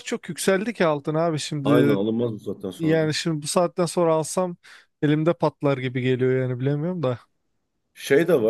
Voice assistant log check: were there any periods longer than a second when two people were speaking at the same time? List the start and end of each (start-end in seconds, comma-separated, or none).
none